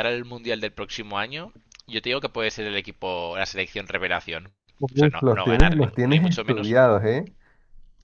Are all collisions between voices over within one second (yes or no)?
no